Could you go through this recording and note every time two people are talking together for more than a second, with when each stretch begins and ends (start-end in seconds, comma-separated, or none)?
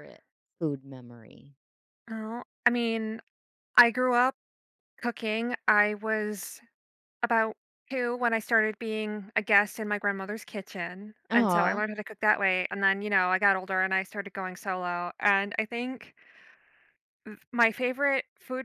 none